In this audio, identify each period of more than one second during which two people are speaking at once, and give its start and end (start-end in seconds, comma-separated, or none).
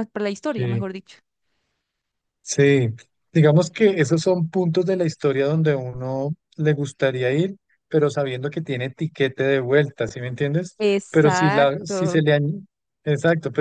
10.8-12.2